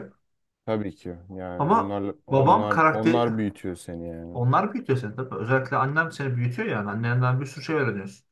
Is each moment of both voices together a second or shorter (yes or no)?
no